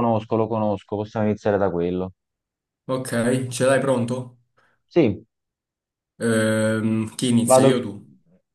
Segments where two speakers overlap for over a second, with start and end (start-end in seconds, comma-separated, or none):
none